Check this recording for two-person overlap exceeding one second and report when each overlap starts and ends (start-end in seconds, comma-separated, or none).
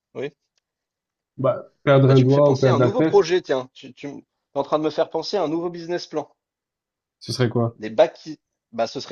2.1-3.3